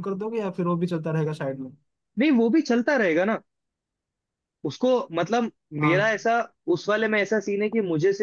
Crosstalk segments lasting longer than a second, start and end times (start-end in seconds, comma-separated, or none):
none